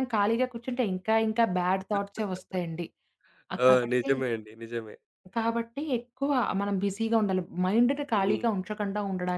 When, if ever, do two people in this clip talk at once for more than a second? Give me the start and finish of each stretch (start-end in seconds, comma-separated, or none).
none